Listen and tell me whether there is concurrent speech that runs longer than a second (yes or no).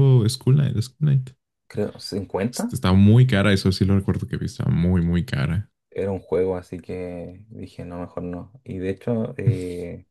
no